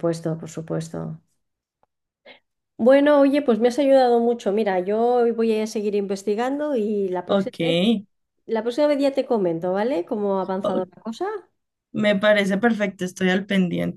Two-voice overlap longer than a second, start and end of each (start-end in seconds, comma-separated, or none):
none